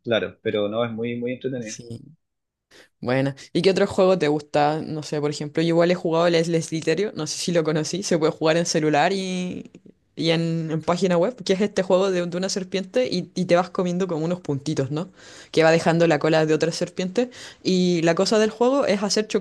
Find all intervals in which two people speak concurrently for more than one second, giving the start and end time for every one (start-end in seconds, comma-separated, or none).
none